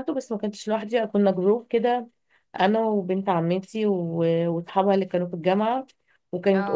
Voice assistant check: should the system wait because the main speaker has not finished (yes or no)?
yes